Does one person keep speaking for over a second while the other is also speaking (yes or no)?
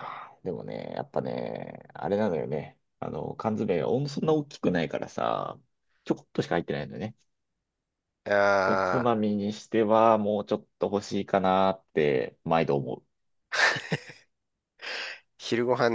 no